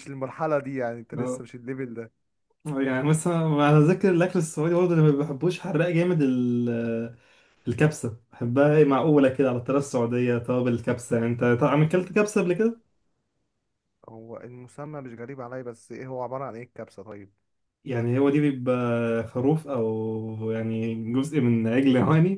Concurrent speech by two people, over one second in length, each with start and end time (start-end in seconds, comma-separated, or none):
none